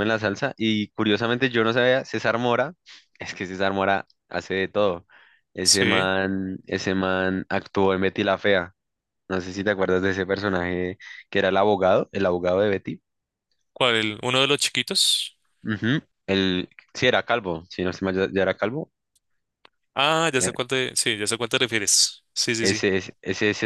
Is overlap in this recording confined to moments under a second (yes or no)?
yes